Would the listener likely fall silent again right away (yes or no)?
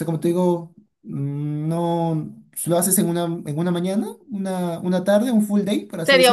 no